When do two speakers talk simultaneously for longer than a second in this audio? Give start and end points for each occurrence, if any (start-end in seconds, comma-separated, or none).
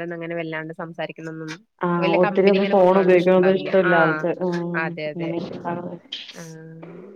2.0-3.9